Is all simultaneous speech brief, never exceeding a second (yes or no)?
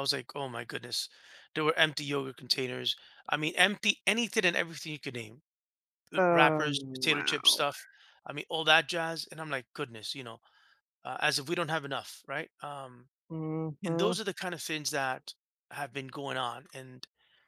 no